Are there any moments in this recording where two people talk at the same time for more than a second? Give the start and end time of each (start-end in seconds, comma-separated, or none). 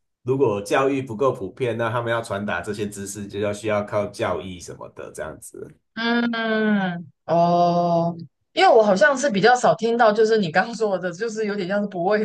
none